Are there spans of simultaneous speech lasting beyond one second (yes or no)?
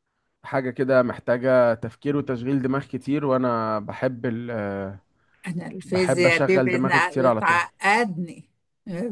yes